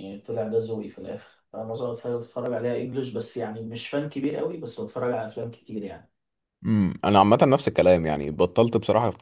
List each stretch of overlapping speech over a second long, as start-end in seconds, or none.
none